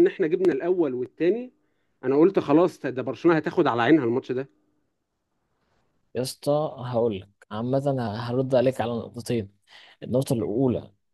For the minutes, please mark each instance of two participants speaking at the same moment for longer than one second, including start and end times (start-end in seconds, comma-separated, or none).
none